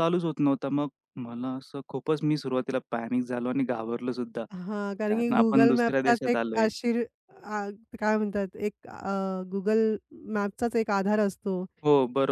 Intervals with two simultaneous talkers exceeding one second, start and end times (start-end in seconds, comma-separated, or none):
5.1-6.7